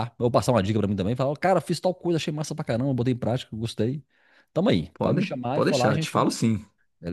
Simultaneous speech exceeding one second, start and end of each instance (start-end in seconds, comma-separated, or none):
4.9-6.3